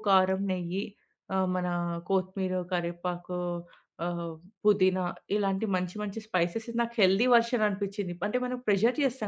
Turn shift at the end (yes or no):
yes